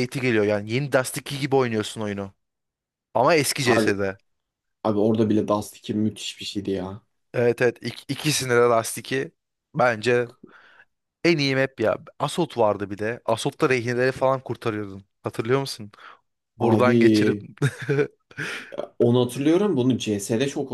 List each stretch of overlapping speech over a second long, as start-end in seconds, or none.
none